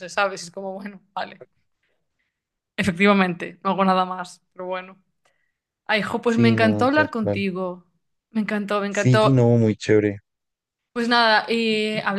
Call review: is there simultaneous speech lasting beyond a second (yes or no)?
yes